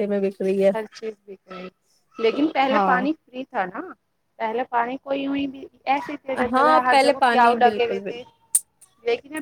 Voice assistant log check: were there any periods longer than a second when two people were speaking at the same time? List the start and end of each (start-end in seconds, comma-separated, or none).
6.5-8.2